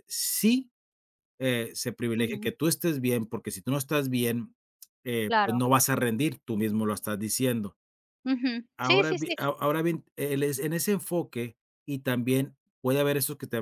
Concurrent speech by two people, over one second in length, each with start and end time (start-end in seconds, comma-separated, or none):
none